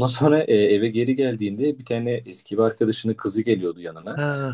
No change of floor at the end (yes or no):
no